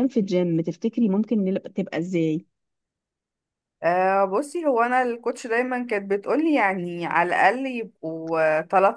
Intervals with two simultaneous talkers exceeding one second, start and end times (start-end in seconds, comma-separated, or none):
none